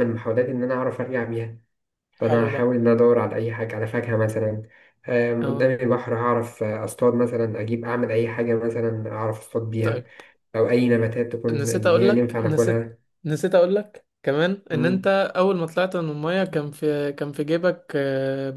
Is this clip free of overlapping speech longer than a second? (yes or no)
no